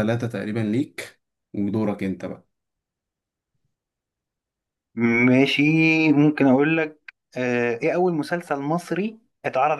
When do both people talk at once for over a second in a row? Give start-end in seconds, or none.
none